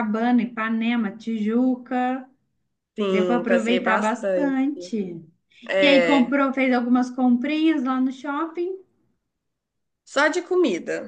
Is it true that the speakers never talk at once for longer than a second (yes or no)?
no